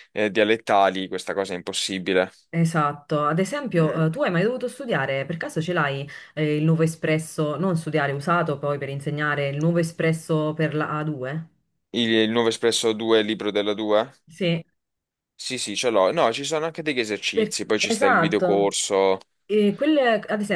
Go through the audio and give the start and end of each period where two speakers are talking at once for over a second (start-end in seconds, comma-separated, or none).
17.3-18.7